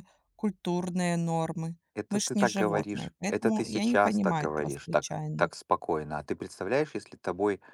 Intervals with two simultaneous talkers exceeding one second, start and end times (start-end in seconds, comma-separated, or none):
1.9-5.5